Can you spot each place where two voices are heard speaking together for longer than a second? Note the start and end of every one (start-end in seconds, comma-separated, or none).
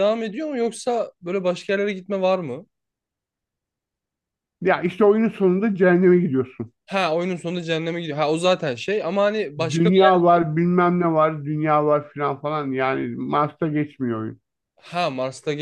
none